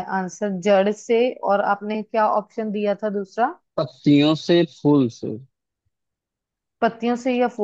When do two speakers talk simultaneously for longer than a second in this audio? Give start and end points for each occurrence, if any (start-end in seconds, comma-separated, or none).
none